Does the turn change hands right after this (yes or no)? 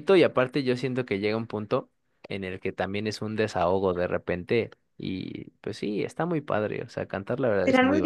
yes